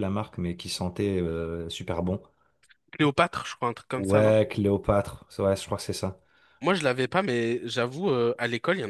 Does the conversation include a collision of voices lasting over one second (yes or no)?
no